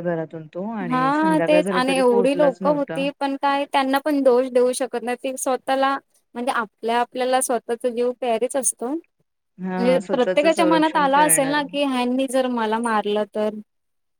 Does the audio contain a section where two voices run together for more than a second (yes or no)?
yes